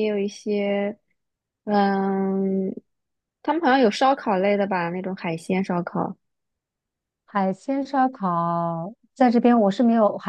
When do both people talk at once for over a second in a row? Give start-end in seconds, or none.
none